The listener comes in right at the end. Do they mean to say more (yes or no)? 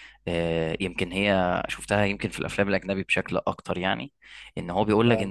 no